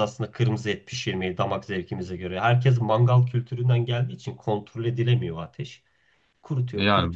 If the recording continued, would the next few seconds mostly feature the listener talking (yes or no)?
yes